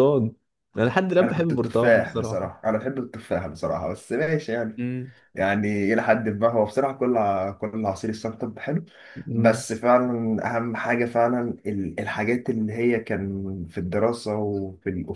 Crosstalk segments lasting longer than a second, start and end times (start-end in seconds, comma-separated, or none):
1.2-2.5